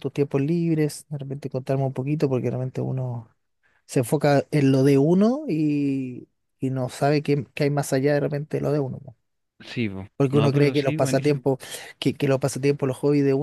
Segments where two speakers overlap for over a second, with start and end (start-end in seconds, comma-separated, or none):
10.2-11.4